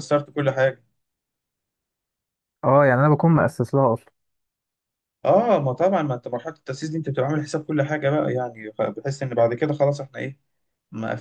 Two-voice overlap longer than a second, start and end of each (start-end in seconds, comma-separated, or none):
none